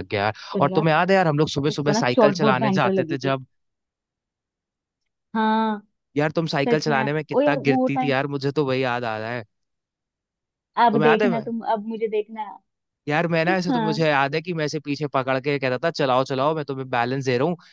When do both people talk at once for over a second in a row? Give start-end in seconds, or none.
1.7-3.4, 6.7-8.2